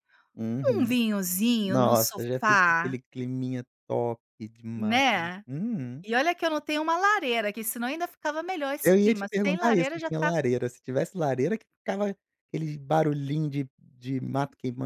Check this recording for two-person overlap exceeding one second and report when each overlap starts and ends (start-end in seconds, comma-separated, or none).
1.6-3.0, 8.8-10.3